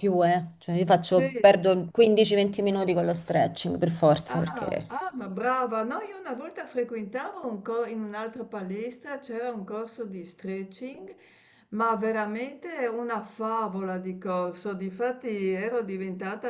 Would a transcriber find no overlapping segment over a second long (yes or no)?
yes